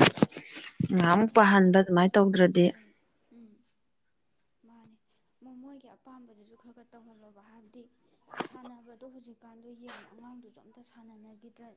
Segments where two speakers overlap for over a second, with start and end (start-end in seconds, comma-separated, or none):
1.2-2.6